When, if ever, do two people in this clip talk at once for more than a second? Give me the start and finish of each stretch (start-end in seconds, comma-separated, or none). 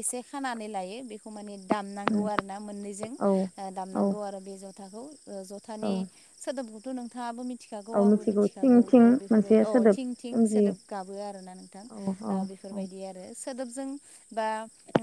8.0-10.7